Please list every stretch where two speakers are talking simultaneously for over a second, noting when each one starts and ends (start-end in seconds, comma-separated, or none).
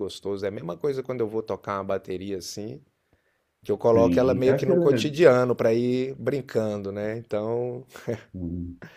3.8-5.1